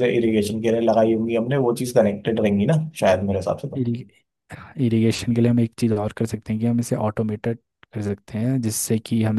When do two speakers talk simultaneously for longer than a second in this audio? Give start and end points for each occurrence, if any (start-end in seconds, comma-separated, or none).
none